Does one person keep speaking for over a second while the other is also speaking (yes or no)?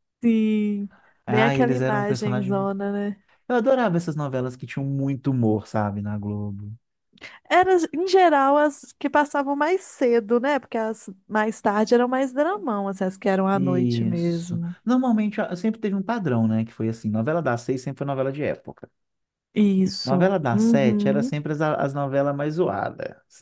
yes